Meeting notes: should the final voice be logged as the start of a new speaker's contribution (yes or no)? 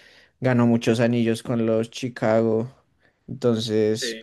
no